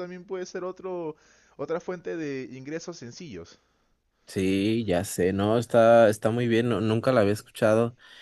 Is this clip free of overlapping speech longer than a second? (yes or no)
yes